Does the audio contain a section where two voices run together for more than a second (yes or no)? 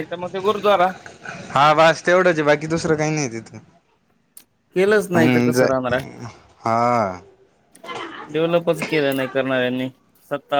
no